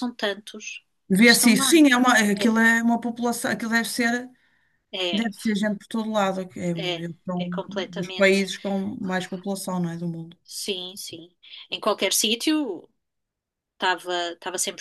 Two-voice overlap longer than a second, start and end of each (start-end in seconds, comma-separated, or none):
6.7-8.4